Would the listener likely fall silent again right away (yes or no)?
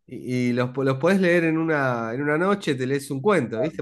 yes